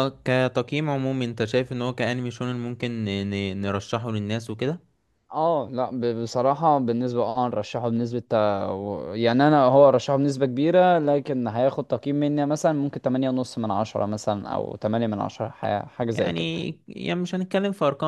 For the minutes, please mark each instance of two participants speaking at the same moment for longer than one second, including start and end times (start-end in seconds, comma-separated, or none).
none